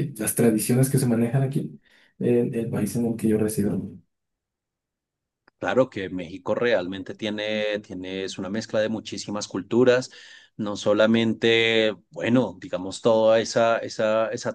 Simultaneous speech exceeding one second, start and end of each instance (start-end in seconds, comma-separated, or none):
none